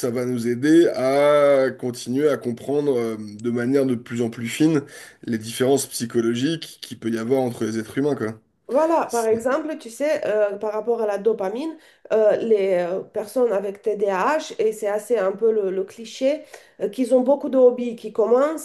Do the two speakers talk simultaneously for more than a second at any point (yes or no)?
no